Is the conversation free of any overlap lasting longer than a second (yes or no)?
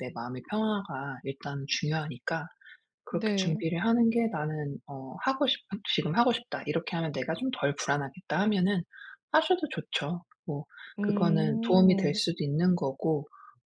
no